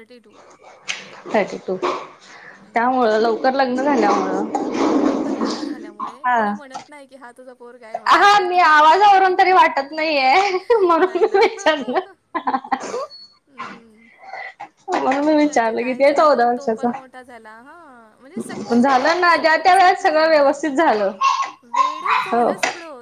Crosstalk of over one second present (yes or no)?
yes